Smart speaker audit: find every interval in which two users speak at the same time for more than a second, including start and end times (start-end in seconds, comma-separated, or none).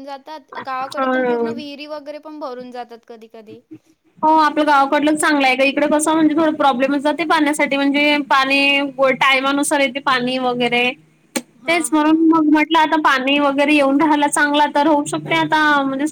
none